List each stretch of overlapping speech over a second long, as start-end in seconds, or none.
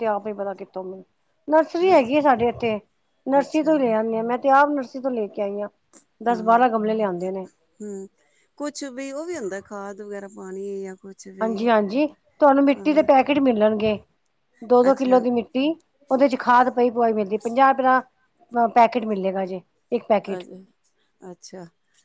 none